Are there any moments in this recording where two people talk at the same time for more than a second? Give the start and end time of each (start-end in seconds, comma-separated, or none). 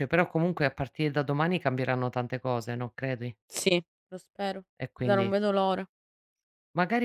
none